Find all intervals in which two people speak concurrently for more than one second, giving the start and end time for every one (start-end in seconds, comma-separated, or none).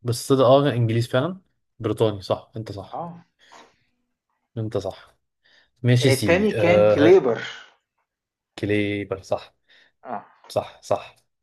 6.0-7.3